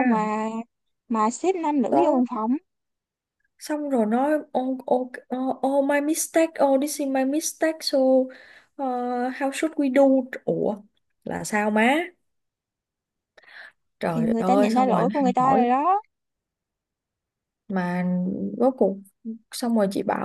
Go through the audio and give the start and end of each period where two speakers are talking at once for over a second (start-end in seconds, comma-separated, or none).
14.1-15.7